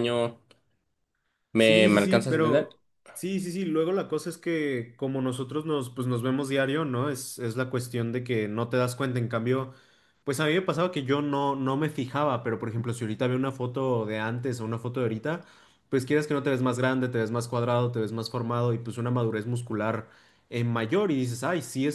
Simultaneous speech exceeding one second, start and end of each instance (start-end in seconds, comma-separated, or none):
1.5-2.8